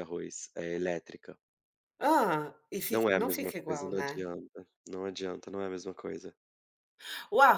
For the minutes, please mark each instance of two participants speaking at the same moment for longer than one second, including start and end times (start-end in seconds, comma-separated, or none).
2.9-4.2